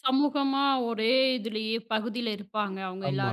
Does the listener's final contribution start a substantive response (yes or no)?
yes